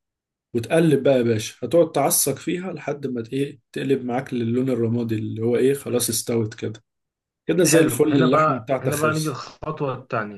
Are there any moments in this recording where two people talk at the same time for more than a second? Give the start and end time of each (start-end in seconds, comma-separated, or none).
7.6-9.4